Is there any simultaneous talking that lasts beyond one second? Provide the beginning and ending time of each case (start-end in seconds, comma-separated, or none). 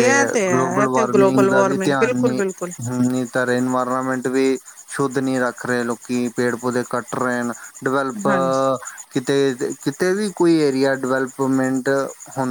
0.5-2.4